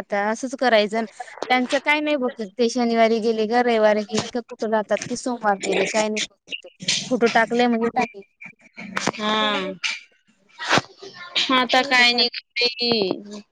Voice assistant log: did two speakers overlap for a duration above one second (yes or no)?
no